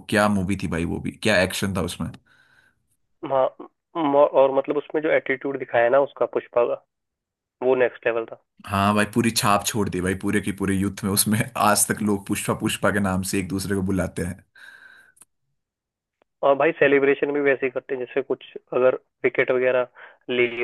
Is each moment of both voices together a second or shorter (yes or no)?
yes